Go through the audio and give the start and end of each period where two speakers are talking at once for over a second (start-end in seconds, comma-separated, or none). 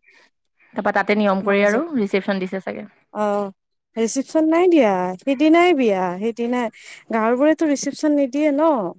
none